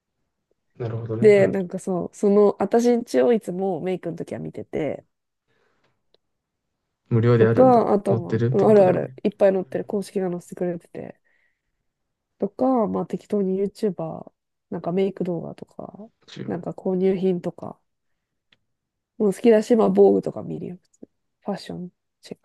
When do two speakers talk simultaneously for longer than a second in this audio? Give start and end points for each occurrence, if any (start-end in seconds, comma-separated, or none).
7.4-9.1